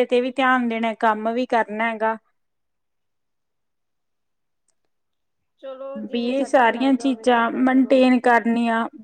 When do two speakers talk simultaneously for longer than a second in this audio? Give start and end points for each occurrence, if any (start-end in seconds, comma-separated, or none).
6.1-8.0